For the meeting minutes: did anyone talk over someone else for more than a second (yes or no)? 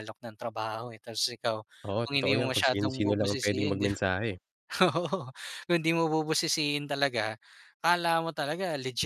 yes